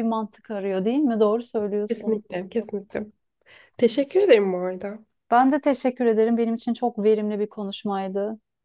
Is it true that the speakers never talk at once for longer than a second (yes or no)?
yes